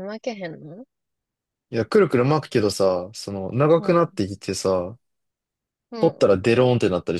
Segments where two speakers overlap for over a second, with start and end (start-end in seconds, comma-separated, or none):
none